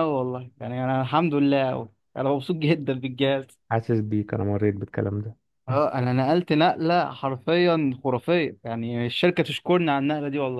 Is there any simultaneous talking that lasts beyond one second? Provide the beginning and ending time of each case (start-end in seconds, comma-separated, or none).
none